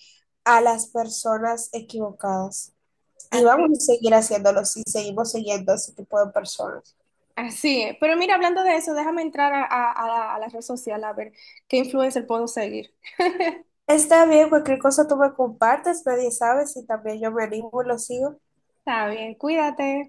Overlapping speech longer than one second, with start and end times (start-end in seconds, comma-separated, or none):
none